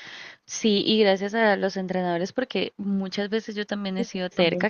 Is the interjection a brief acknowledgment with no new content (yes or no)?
yes